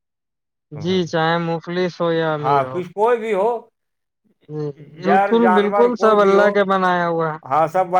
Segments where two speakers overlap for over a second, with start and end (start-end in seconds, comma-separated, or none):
5.0-6.5